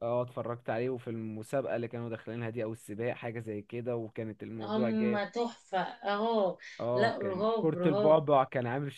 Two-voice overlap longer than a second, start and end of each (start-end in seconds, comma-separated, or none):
6.9-8.2